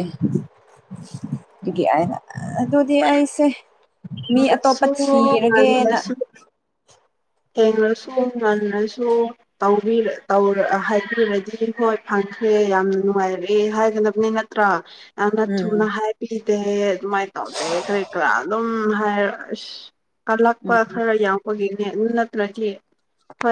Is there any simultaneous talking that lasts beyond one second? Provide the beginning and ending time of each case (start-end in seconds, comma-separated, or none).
4.3-6.0